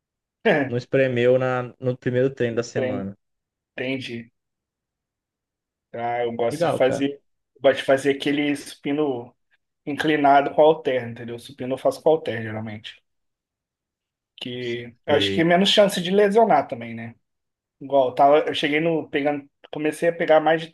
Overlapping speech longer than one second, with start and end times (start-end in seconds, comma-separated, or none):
none